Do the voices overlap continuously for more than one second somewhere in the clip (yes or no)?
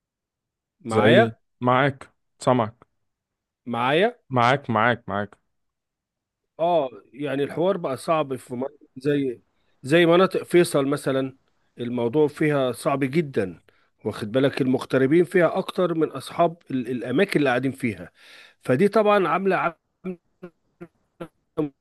no